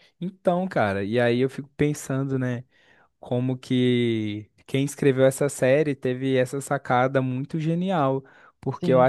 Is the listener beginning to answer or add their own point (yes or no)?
no